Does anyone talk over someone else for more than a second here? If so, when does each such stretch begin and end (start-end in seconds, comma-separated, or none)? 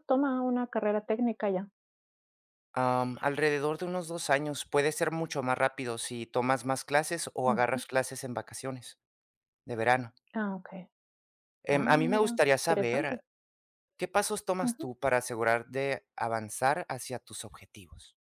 11.7-13.2